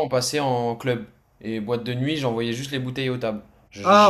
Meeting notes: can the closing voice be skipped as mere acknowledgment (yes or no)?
no